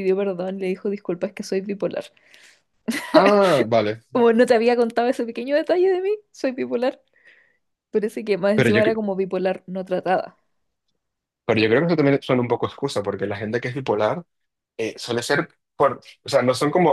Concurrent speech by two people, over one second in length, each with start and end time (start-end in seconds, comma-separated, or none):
none